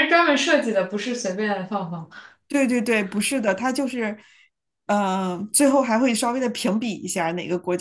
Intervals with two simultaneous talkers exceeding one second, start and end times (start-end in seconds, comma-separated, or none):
none